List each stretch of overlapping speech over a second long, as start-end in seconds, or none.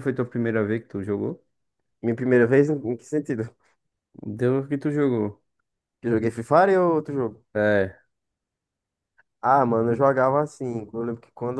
none